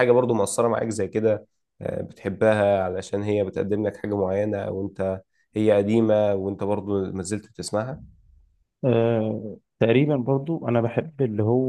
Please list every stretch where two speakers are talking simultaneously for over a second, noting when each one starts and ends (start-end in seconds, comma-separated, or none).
none